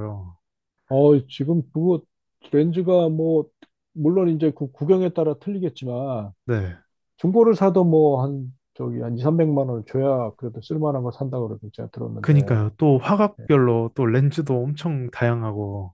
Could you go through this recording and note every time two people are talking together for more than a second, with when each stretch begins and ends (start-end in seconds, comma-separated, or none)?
none